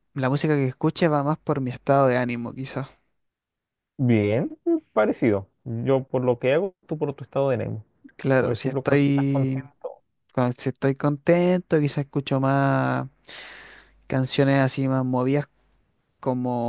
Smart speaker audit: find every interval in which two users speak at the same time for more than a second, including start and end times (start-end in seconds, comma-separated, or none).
8.4-9.7